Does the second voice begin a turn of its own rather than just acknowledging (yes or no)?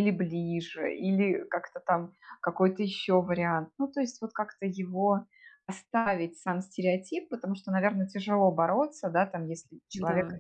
no